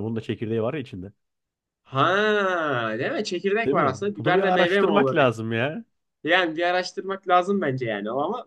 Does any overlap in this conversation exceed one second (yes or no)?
yes